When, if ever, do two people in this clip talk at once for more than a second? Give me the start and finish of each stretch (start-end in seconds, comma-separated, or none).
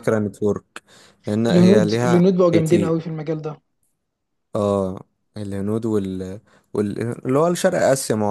1.5-3.0